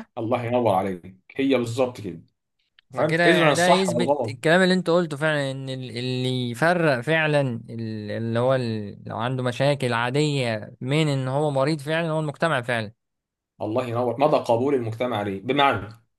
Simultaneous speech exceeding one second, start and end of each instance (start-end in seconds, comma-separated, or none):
2.9-4.3